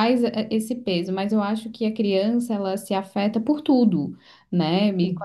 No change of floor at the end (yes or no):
yes